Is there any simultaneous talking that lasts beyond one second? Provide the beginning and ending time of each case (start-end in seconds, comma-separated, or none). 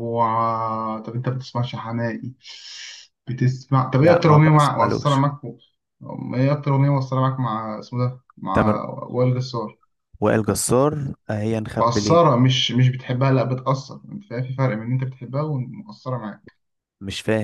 4.0-5.2